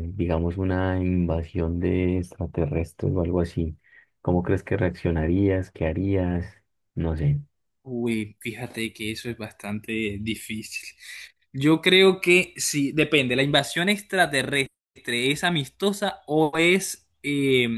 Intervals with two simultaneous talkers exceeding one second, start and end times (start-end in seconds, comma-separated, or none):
none